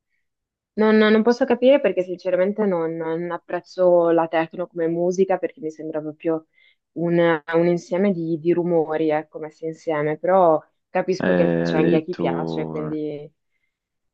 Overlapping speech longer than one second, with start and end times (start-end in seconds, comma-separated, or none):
11.2-13.0